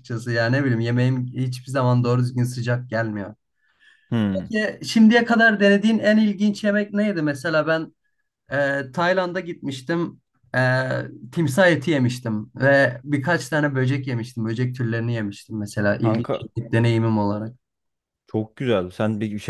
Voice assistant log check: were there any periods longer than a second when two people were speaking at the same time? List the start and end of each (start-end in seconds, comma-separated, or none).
none